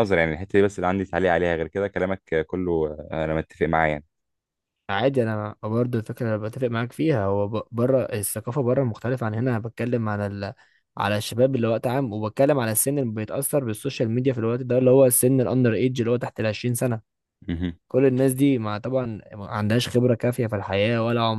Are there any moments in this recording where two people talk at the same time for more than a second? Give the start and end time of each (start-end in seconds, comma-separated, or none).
none